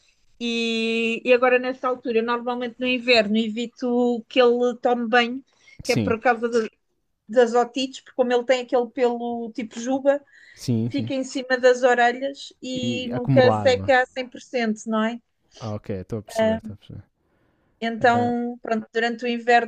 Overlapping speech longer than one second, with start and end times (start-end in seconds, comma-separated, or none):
12.7-13.9